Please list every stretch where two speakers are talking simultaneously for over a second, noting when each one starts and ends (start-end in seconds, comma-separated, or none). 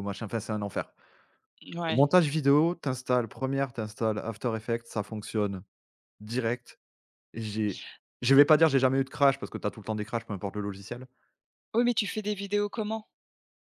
none